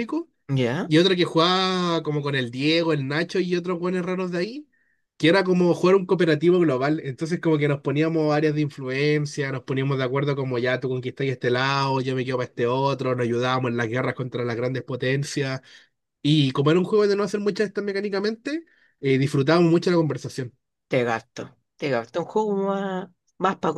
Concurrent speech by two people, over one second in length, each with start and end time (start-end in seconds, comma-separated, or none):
none